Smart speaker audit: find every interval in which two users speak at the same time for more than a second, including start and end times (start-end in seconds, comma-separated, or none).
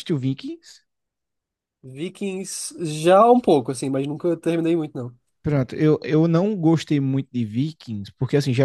none